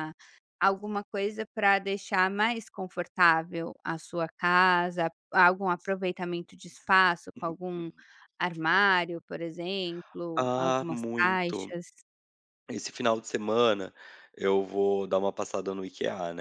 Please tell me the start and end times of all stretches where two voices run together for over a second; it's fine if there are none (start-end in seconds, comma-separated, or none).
10.4-11.8